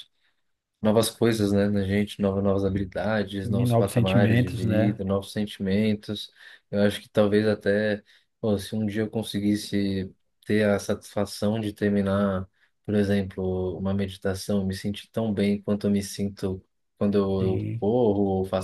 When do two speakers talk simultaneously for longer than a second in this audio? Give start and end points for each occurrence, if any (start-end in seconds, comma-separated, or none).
3.4-5.0